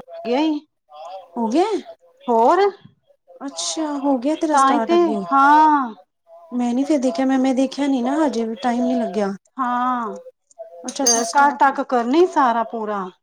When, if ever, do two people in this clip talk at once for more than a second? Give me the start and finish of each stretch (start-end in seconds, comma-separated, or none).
none